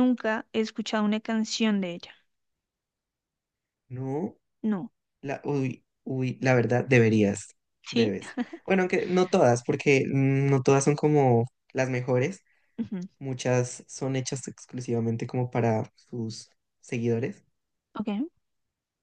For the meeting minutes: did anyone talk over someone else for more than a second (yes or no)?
no